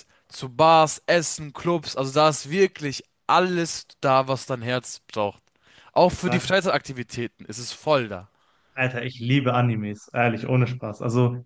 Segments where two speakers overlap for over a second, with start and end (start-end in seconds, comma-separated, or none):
none